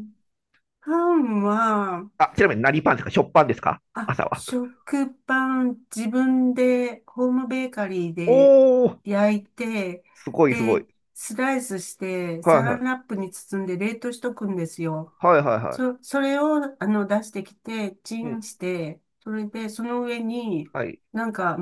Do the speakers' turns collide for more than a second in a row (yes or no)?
no